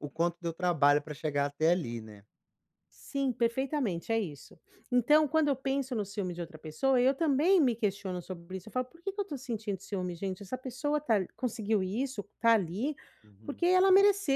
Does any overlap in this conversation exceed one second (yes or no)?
no